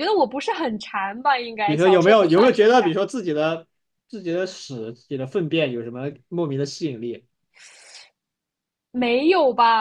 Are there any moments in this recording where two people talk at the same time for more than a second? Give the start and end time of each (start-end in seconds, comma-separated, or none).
1.6-2.9